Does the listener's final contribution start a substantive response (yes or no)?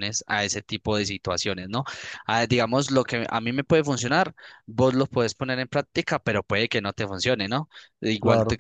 no